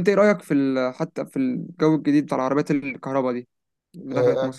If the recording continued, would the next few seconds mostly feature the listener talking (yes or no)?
yes